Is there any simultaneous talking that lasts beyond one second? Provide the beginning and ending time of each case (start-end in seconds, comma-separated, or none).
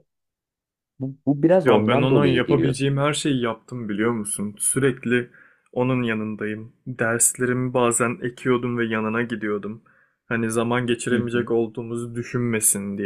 1.6-2.9